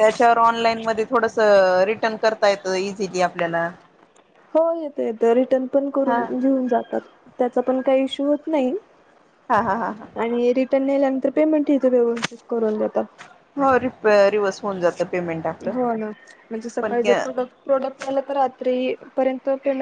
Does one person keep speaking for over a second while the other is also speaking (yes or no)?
no